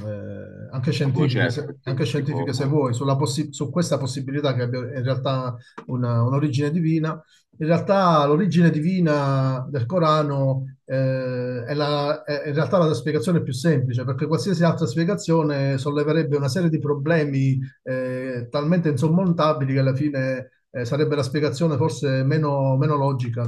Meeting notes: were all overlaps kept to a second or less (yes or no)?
no